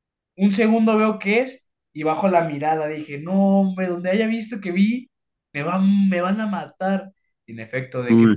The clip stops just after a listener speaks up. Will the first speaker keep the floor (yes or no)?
yes